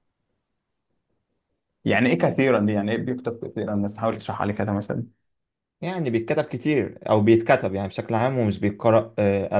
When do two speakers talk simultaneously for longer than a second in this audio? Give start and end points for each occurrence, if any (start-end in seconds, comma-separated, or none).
none